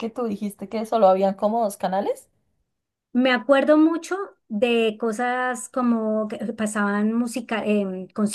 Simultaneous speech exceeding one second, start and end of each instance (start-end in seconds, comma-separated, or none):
none